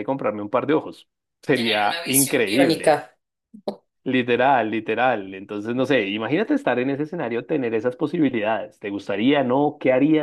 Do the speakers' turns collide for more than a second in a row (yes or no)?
yes